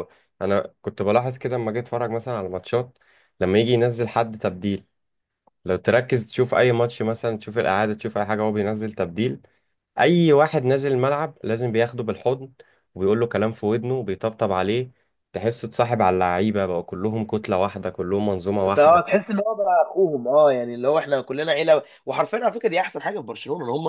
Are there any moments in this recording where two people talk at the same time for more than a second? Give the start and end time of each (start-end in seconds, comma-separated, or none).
none